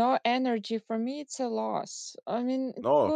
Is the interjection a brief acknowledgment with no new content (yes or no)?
yes